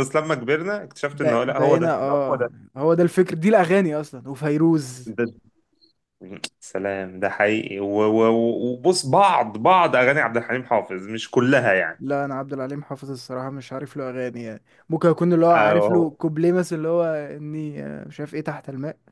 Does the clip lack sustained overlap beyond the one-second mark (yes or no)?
no